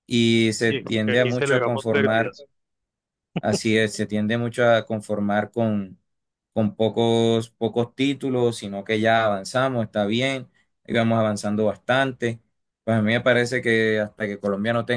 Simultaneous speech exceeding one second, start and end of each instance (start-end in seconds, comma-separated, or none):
0.7-2.4